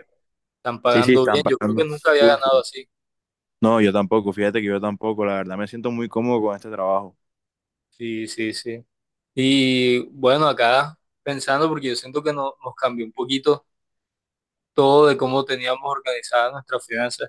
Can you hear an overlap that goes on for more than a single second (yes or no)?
yes